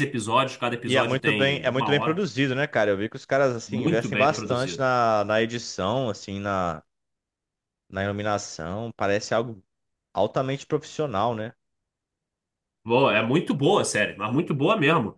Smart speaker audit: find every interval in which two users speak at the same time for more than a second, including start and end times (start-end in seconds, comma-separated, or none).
0.8-2.2, 3.7-4.9